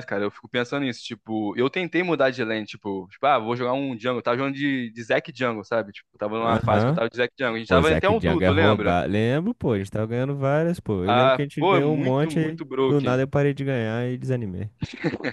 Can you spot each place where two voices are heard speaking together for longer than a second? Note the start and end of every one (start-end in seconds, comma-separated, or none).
7.7-9.0, 11.1-13.2